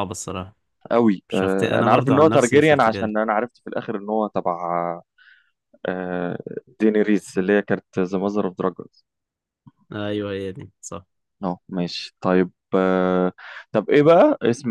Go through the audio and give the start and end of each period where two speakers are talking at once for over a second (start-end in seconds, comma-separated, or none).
1.3-3.1